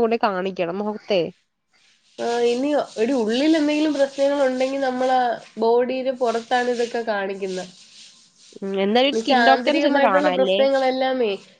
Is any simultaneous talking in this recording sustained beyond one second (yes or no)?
yes